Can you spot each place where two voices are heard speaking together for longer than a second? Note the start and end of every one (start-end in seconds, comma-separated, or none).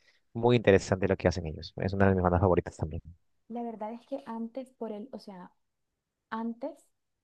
none